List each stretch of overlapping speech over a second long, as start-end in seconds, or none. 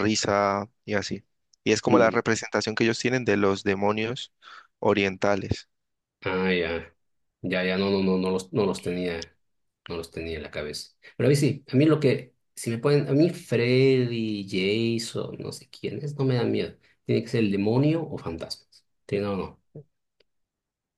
none